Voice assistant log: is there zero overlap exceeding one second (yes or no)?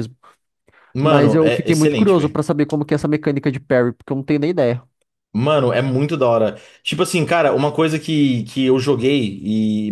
no